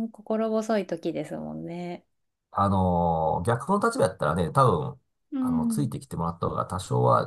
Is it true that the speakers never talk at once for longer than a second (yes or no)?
yes